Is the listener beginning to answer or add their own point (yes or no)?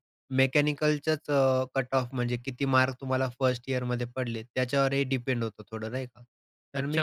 yes